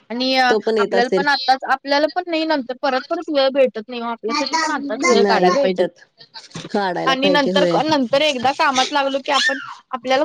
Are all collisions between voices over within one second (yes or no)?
no